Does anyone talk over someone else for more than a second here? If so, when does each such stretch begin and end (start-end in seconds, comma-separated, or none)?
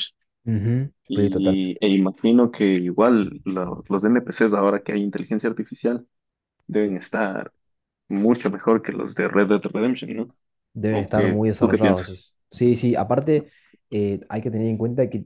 10.9-12.2